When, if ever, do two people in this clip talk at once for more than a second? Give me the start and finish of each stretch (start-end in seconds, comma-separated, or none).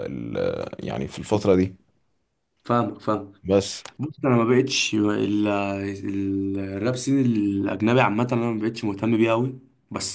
none